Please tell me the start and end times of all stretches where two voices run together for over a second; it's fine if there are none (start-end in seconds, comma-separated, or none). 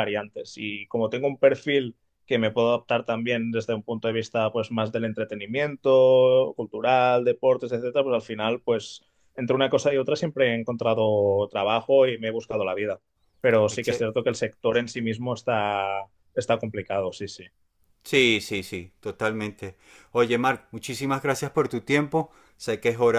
none